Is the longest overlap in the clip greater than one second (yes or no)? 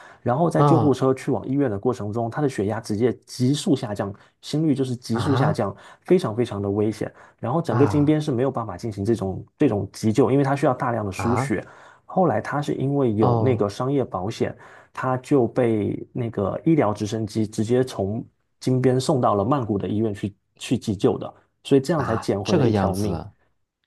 yes